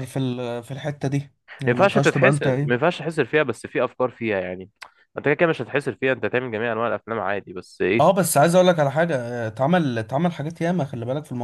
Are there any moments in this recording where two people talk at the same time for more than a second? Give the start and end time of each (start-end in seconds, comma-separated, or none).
1.5-2.9